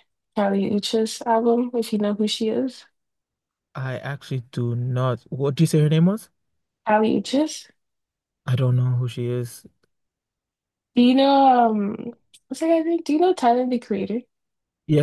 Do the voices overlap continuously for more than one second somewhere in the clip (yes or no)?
no